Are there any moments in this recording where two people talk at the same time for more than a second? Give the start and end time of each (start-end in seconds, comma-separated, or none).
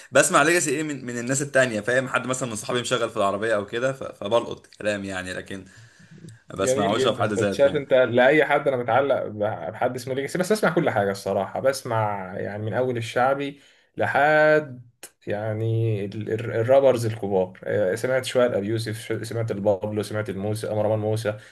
6.5-7.8